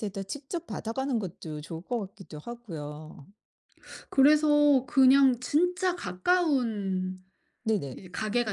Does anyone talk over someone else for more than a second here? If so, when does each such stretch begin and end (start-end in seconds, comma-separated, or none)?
none